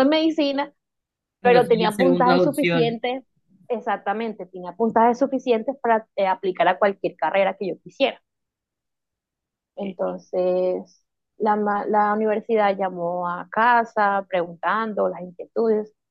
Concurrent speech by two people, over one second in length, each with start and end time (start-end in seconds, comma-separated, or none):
1.4-3.0